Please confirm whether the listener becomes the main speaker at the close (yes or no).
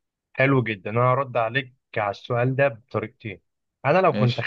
no